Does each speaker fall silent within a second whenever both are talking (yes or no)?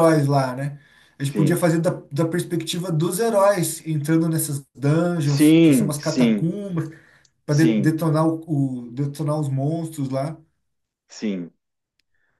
no